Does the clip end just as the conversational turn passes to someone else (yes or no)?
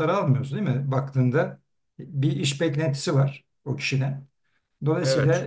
no